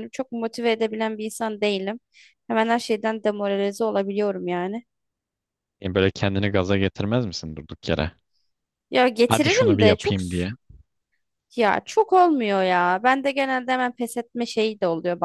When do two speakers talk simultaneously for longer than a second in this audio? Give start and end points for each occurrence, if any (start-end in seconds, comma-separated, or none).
9.3-10.5